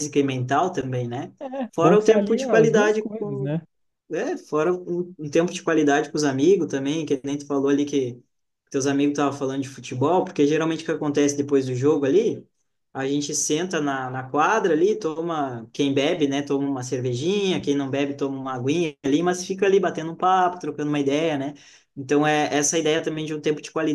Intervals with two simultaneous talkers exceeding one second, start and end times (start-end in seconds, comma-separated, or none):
1.7-3.5